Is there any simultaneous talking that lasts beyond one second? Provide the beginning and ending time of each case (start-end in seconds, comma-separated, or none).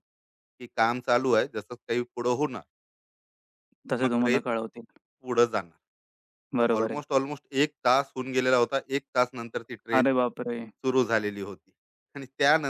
none